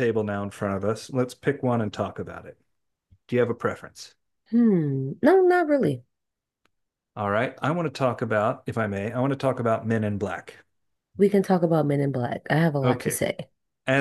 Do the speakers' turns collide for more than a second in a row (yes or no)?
no